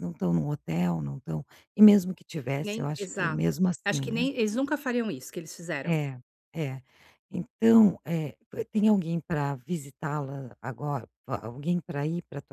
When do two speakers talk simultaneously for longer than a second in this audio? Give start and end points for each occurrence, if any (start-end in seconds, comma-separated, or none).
2.6-4.3